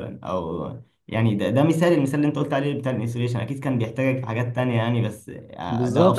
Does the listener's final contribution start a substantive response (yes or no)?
yes